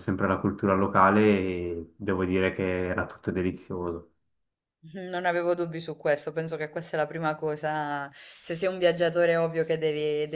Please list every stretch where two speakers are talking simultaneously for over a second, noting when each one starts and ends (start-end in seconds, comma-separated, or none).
none